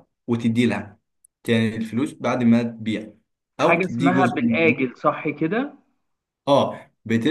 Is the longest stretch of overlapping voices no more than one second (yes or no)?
no